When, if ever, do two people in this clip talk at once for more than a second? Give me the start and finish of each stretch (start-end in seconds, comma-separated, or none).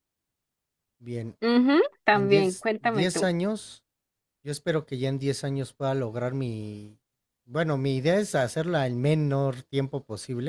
2.1-3.3